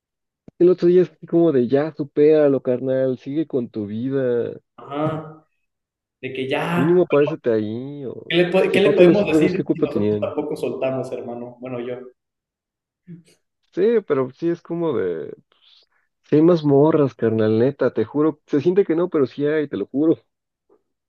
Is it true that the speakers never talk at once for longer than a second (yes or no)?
no